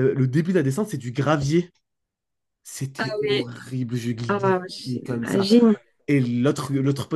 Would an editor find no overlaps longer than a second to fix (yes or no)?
no